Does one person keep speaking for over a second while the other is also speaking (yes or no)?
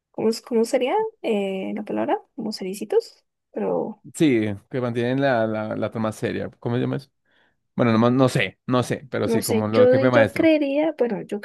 yes